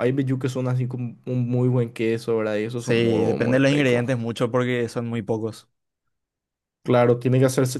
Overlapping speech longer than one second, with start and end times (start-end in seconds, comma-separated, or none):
2.7-4.0